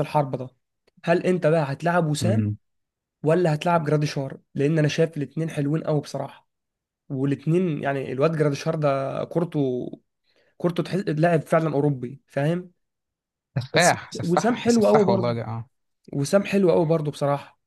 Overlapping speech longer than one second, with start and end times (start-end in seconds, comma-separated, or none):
13.7-15.4